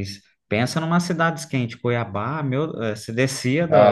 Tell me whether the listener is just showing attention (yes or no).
no